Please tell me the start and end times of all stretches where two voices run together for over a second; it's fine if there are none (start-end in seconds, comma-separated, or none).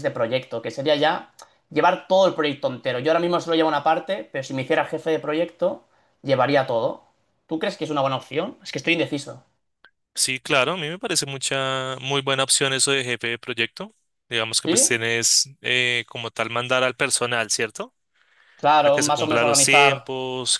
18.8-20.1